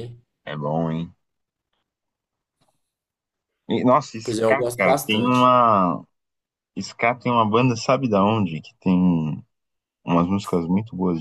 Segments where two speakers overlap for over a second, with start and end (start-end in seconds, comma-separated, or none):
4.2-5.5